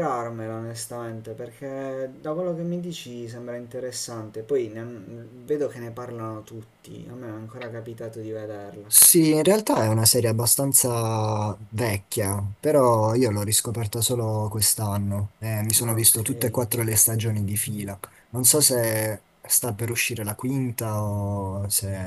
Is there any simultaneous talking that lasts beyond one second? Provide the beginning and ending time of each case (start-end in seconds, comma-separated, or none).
none